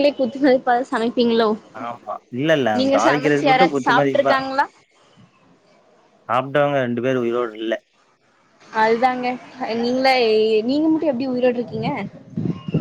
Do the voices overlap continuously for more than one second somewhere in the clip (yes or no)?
yes